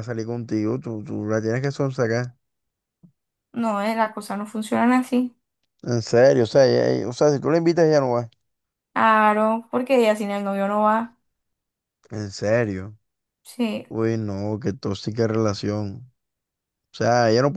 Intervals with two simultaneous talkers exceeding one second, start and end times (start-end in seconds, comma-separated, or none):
none